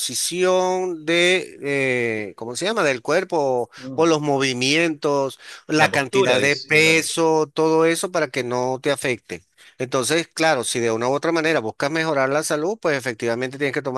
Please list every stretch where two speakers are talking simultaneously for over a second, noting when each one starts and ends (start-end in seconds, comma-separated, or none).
5.8-7.1